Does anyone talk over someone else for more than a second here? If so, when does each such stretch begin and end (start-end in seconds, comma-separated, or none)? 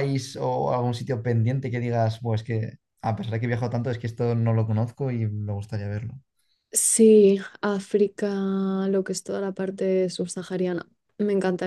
none